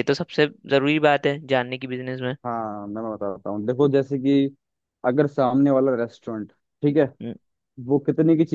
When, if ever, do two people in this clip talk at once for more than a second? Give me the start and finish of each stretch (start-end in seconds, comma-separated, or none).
none